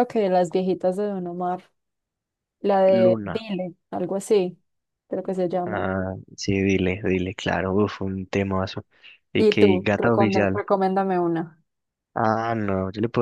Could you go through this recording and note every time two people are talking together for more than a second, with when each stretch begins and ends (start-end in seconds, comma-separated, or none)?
9.4-10.6